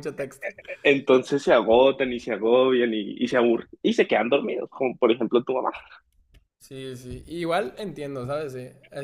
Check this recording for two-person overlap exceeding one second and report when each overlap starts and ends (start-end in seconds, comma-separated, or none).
none